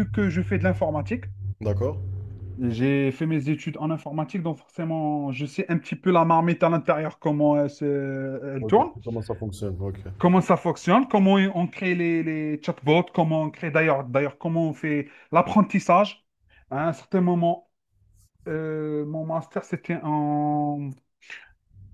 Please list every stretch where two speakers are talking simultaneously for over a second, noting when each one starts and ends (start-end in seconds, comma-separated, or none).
none